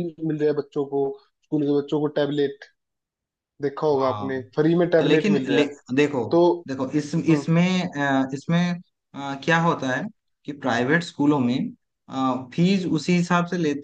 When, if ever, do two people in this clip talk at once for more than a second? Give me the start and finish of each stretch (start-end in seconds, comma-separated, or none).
3.9-5.7